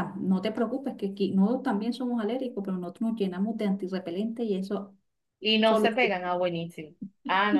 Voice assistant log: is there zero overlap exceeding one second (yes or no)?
yes